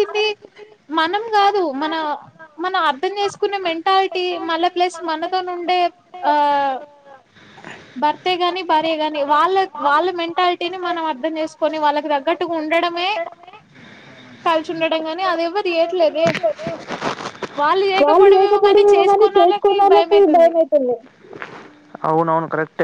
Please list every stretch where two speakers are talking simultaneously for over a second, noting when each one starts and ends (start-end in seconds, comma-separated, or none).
18.3-20.5